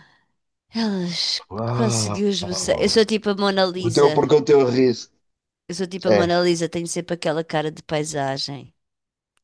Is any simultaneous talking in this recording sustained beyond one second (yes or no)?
yes